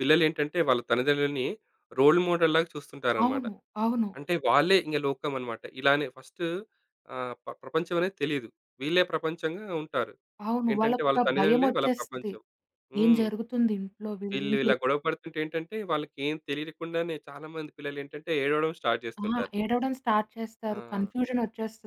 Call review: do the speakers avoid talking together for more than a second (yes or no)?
no